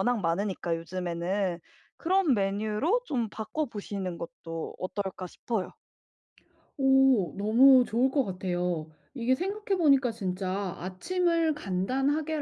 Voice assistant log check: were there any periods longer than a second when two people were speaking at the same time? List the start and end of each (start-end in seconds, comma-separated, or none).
none